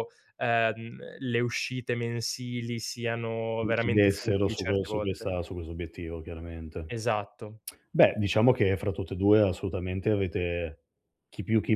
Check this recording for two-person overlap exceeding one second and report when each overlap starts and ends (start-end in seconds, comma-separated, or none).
3.6-5.3